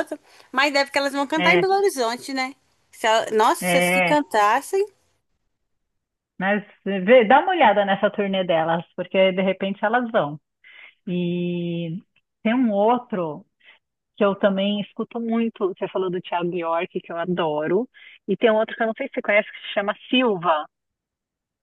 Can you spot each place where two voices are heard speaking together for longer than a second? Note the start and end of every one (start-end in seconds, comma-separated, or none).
none